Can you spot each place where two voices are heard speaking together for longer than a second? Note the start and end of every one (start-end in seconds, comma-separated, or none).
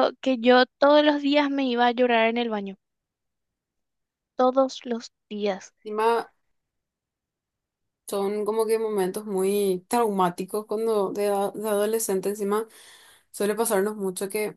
none